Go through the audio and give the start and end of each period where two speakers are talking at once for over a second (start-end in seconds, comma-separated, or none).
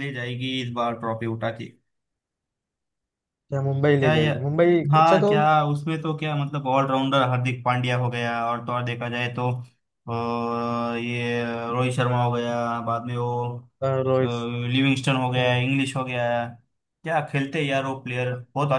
none